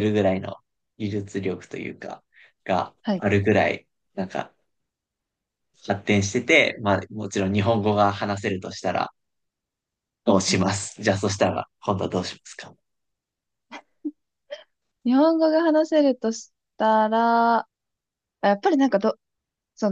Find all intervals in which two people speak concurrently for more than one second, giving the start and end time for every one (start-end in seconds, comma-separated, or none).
none